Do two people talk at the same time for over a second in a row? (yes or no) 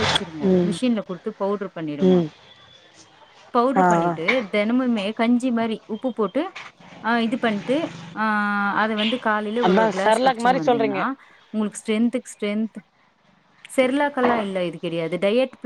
no